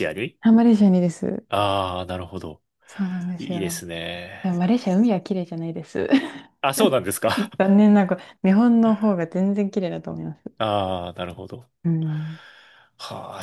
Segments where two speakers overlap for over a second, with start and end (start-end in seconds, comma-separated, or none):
none